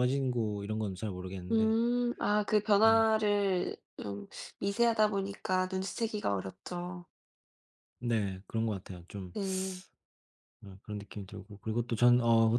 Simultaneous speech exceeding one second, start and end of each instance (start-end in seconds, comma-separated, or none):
none